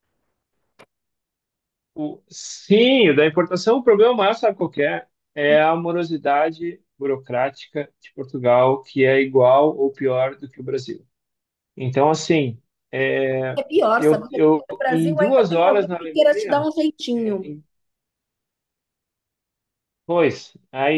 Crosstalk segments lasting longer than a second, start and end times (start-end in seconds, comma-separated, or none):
14.0-16.7